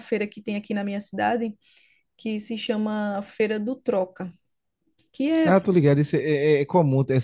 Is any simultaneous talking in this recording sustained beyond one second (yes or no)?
no